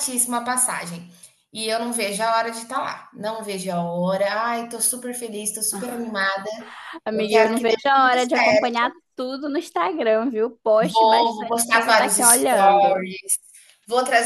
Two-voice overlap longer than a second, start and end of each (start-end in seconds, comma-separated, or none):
7.1-8.7, 10.8-13.1